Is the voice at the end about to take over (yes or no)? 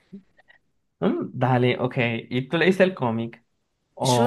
yes